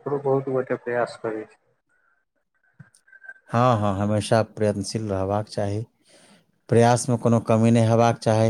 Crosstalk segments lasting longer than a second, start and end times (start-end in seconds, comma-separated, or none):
none